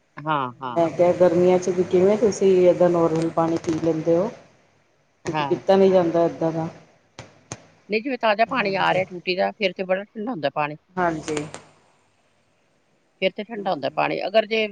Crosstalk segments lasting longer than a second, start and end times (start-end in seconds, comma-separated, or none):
none